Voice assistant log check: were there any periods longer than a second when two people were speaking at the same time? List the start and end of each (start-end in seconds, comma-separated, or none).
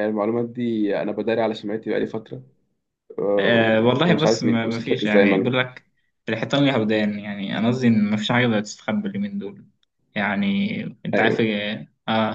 3.4-5.5